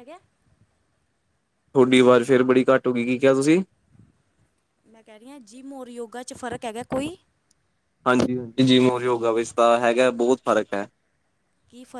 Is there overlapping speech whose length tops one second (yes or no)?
no